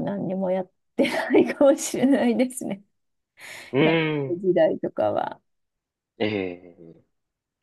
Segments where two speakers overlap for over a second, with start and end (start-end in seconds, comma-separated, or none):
none